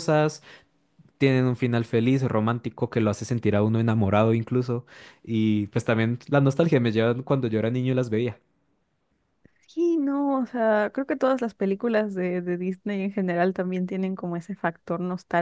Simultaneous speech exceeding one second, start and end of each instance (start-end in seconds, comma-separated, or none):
none